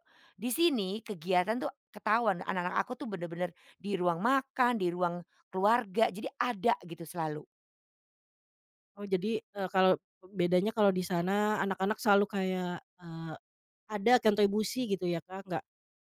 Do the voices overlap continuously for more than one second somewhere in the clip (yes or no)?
no